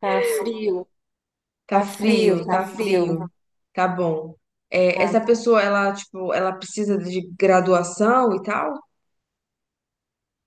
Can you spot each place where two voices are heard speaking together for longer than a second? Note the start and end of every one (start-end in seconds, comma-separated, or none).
1.7-3.2